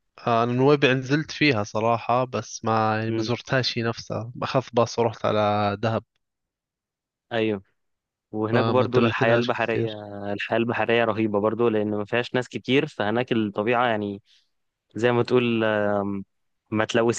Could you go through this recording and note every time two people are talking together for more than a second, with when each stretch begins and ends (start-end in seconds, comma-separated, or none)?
8.5-9.9